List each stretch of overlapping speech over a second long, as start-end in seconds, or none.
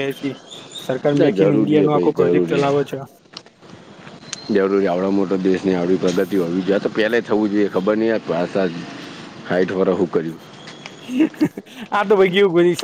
1.1-2.7